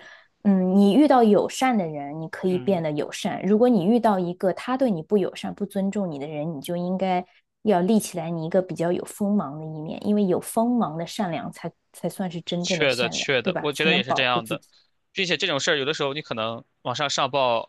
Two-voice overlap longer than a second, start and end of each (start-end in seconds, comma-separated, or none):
12.6-14.6